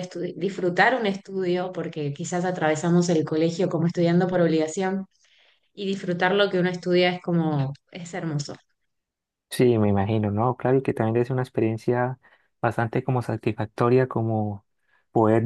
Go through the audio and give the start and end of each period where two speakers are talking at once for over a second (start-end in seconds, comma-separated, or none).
none